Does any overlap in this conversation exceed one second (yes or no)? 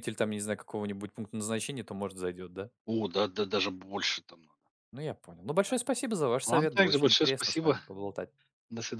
yes